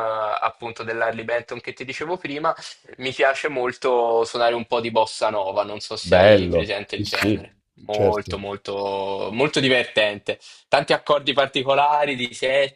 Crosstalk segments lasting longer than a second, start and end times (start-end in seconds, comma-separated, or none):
6.0-8.3